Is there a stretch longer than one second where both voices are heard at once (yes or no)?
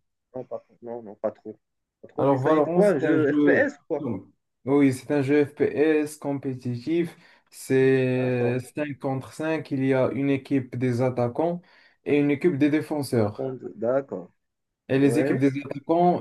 yes